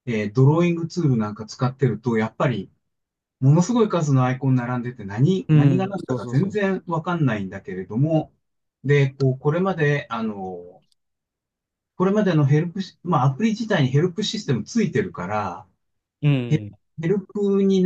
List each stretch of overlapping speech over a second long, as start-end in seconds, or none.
5.5-6.8